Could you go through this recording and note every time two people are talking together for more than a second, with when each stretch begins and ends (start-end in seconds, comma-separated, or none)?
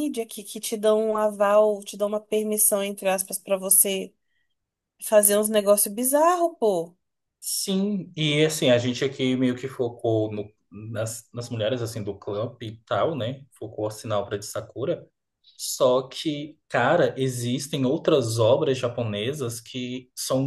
none